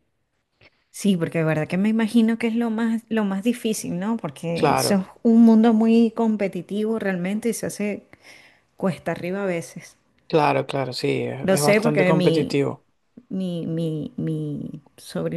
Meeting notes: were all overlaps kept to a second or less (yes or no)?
no